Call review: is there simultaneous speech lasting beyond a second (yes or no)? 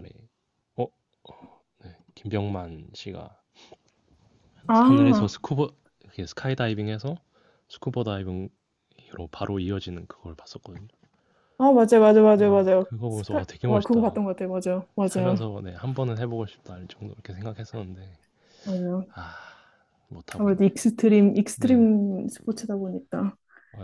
yes